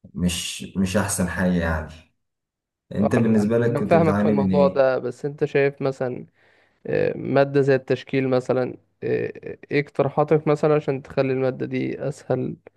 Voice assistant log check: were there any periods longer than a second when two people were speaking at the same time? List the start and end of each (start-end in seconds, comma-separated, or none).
3.0-4.8